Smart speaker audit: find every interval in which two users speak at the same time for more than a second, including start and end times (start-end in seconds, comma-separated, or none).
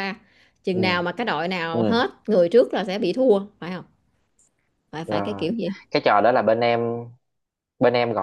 none